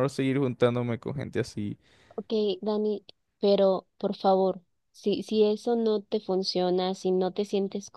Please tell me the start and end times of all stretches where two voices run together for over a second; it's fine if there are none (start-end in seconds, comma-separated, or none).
none